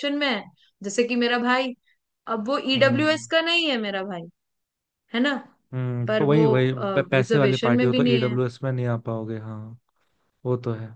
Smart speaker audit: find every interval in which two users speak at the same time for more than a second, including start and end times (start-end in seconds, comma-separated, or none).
7.1-8.4